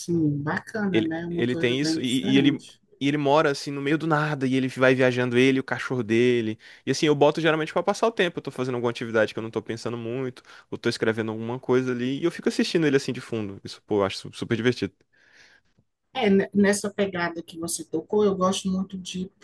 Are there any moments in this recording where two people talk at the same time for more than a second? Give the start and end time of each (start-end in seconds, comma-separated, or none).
0.9-2.6